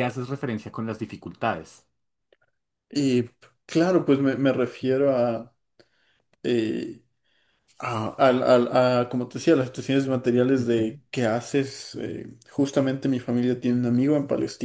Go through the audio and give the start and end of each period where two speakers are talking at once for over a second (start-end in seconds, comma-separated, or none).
none